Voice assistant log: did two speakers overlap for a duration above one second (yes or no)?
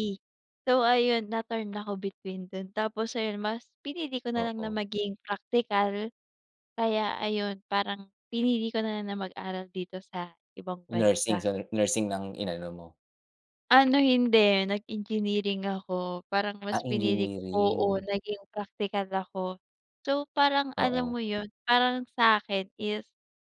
yes